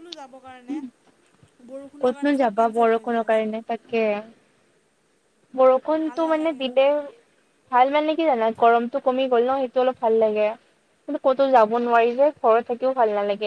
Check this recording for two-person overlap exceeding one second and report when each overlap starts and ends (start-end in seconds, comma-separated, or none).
2.0-3.5